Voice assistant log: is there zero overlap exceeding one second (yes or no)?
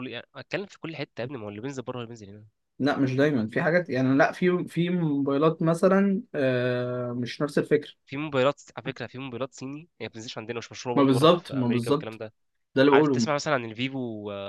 no